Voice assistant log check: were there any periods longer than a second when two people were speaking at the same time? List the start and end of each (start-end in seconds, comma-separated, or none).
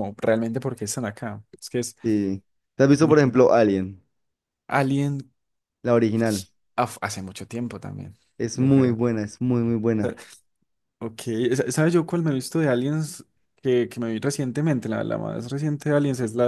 none